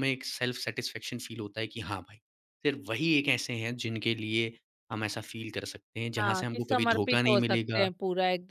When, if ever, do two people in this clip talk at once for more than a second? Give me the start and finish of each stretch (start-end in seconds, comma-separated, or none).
6.2-7.9